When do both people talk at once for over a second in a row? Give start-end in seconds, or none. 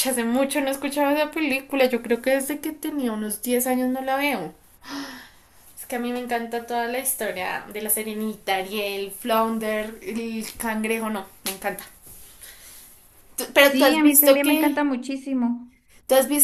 13.6-14.8